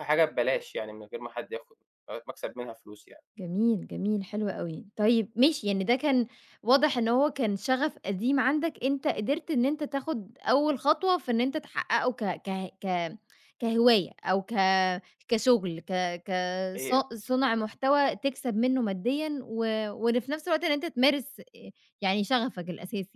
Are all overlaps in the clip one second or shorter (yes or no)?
yes